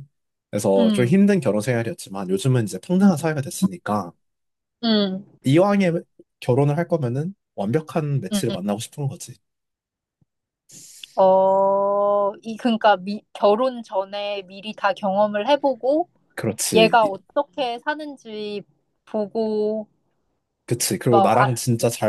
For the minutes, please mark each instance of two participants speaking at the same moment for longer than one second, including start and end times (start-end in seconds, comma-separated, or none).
none